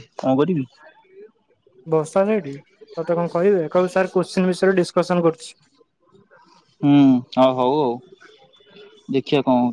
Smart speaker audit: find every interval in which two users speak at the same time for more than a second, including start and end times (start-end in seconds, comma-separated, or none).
none